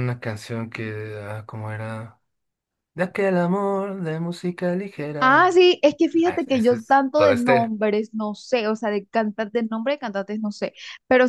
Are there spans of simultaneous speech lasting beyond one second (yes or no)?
yes